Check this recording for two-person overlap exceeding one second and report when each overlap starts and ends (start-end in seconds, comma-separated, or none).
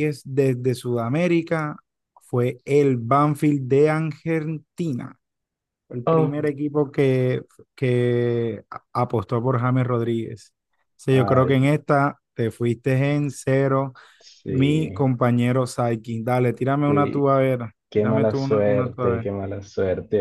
17.9-19.3